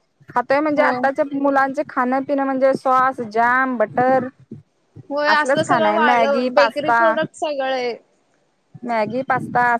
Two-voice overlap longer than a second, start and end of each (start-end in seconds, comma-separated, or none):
5.3-7.0